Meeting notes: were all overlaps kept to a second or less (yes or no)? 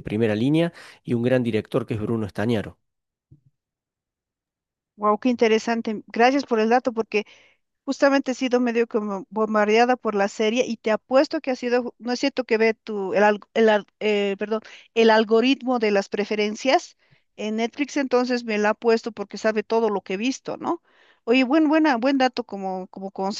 yes